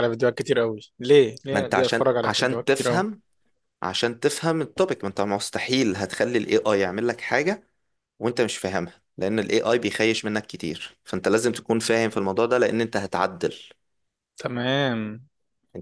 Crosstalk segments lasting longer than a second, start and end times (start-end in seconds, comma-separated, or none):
1.5-3.0